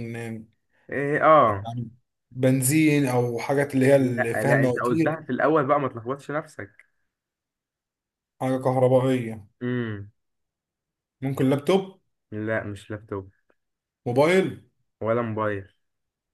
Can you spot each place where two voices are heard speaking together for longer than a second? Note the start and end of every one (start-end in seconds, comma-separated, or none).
4.0-5.2